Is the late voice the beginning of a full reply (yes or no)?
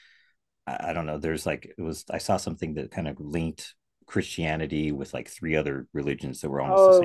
yes